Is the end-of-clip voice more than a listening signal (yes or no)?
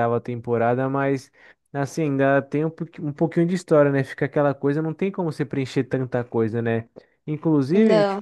no